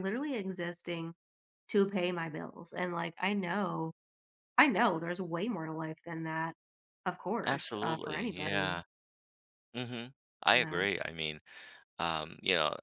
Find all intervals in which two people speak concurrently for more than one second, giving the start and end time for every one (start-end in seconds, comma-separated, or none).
7.5-8.8